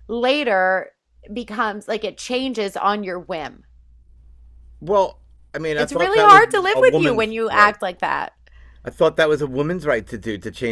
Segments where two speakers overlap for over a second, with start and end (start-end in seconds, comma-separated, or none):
5.8-7.7